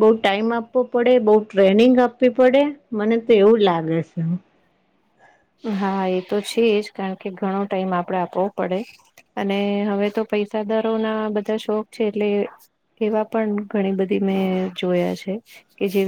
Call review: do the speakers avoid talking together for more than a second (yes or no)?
yes